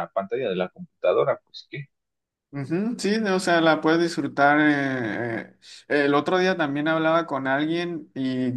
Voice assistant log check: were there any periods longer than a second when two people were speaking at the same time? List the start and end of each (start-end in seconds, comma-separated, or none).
none